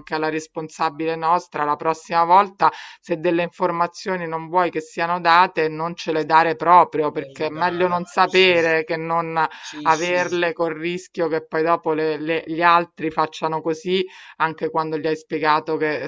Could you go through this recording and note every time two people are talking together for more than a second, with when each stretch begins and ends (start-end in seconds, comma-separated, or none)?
7.1-8.6